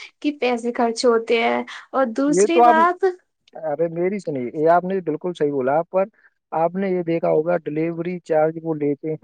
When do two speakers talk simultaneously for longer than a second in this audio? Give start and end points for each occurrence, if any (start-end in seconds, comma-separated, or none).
none